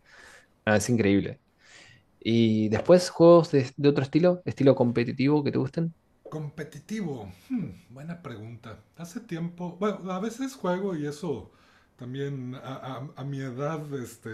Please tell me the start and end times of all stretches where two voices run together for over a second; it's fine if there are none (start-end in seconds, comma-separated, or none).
none